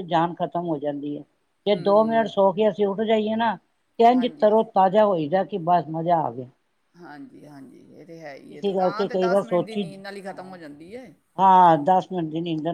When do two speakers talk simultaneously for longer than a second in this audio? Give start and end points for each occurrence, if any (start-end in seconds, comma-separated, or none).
8.5-9.8